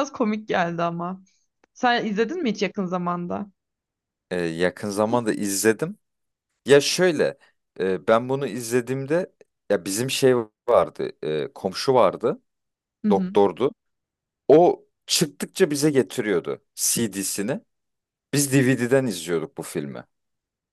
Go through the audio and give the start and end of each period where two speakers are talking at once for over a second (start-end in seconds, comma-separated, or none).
none